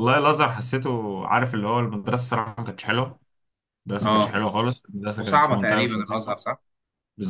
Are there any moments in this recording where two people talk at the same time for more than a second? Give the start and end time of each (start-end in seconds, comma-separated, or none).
5.2-6.4